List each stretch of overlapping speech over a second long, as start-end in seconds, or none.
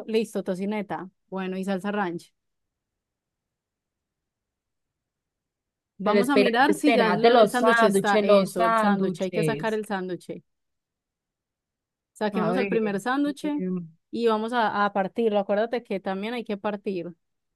6.0-9.8